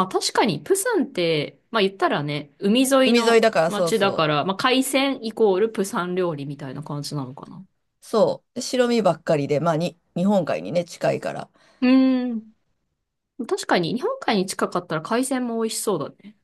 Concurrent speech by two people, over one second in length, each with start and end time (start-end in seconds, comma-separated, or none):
3.0-4.5